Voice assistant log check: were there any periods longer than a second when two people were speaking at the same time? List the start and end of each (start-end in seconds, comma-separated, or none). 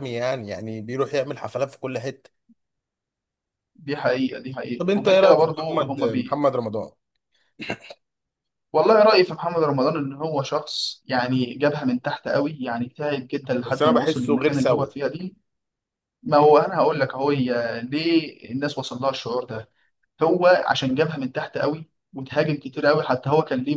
4.8-6.4, 13.6-15.0